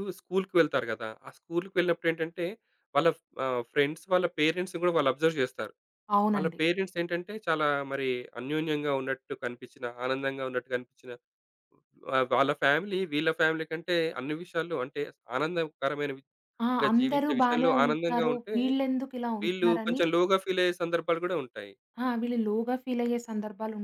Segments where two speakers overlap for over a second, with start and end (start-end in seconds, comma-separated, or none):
16.7-18.5